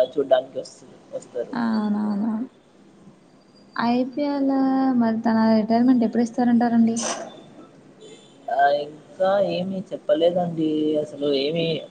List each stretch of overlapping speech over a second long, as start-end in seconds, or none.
none